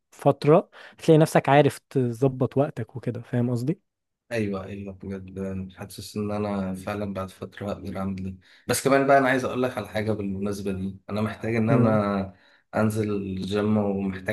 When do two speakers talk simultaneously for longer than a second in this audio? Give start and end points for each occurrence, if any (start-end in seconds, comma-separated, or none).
none